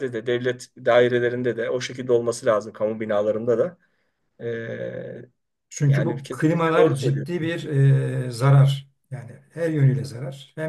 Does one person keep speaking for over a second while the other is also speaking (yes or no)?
yes